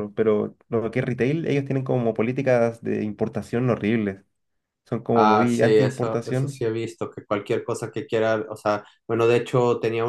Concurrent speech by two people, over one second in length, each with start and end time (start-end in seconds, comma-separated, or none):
5.1-6.6